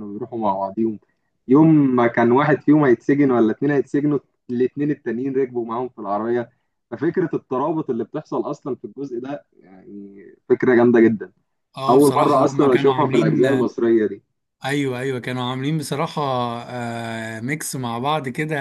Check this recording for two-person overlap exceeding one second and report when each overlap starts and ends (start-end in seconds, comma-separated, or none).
11.9-13.7